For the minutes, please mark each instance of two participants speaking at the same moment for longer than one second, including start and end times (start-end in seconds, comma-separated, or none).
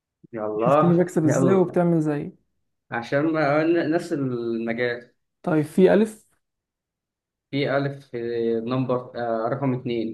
0.6-1.8